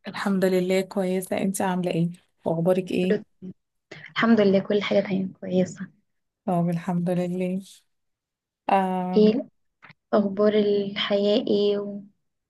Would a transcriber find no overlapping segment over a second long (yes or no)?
yes